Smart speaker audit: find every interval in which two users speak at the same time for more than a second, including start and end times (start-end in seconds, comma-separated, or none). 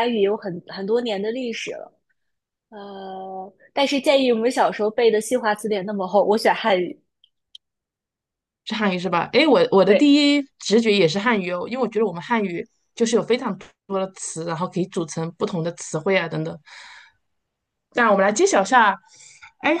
none